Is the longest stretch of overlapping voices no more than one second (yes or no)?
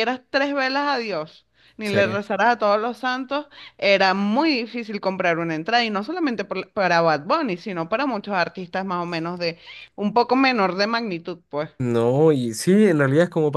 yes